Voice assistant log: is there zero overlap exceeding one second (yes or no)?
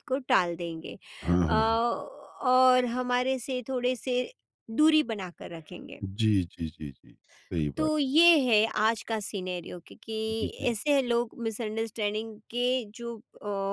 yes